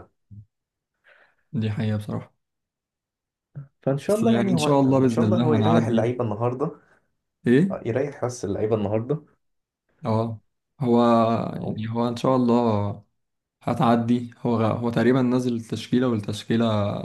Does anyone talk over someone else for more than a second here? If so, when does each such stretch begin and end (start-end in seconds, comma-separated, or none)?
4.1-6.1